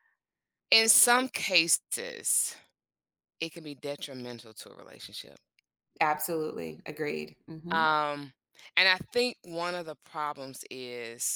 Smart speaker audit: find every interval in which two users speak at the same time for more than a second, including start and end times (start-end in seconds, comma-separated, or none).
none